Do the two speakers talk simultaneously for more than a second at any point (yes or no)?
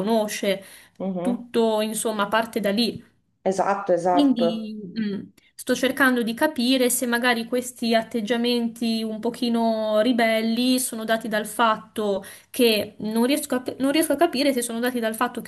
no